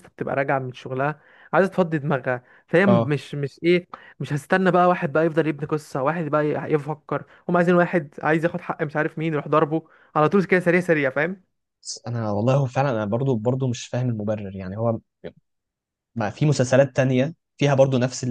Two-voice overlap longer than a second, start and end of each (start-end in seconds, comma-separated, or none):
none